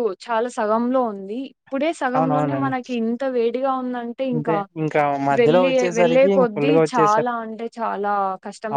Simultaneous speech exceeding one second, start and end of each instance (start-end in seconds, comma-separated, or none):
5.4-7.3